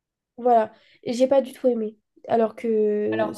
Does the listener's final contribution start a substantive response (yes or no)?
no